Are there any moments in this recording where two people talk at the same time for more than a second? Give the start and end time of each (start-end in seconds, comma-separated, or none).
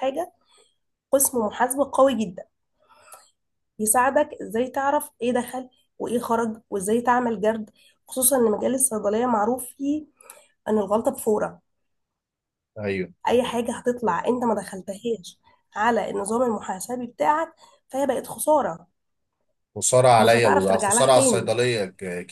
20.2-21.5